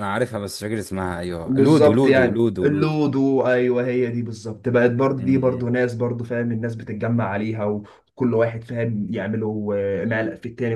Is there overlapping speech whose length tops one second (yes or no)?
yes